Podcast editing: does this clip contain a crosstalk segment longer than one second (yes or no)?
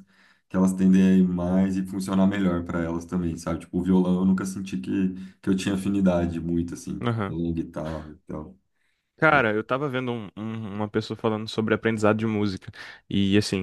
no